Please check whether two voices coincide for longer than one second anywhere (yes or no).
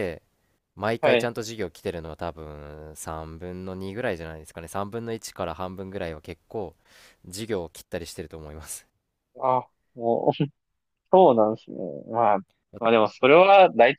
no